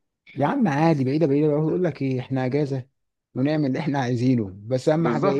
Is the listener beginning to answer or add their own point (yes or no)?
yes